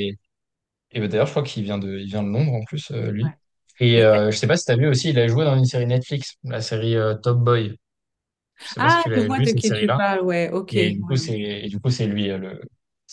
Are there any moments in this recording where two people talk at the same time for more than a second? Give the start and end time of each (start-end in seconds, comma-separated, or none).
8.8-10.0